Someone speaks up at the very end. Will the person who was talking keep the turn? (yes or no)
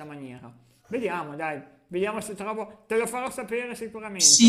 no